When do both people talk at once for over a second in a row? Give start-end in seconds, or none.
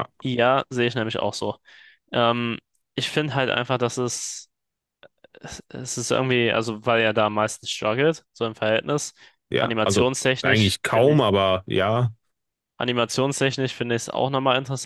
9.6-11.2